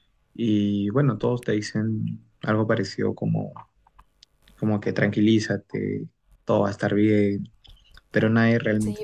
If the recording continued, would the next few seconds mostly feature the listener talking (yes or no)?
yes